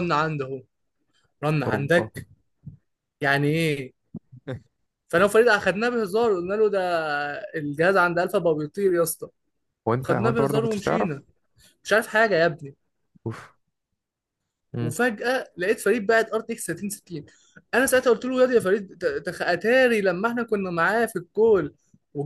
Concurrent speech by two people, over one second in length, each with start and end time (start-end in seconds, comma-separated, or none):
10.0-11.2